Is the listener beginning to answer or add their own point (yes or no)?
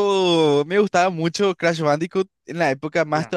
no